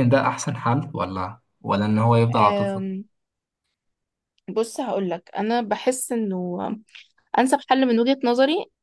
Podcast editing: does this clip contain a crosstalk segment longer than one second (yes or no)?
no